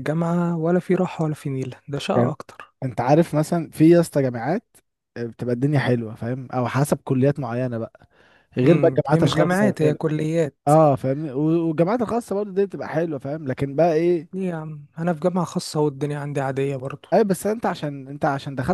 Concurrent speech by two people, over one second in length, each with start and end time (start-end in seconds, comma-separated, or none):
8.6-10.0